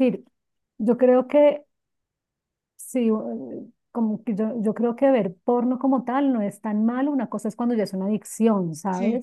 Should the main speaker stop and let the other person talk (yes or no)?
no